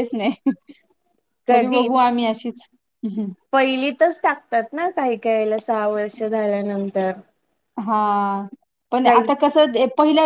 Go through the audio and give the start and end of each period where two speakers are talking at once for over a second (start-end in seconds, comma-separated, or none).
none